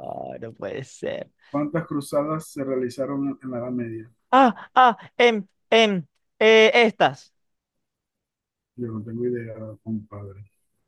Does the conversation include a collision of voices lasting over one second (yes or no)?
no